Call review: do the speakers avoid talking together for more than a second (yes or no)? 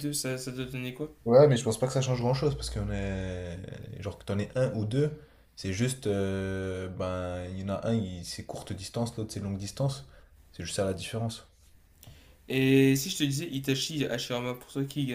yes